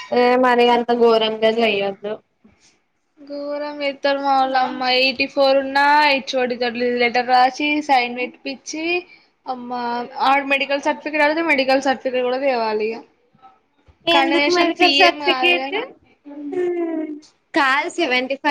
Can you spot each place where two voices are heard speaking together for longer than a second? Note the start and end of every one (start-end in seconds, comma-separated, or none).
14.2-15.8